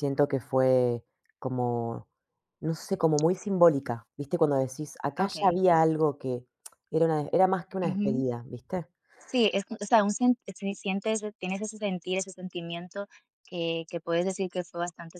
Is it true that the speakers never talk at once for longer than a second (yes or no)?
yes